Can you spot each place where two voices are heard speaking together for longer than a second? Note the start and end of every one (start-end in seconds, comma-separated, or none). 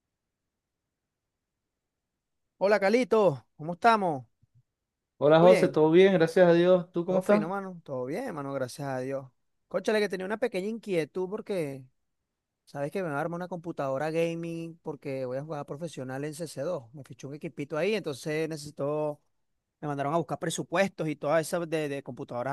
none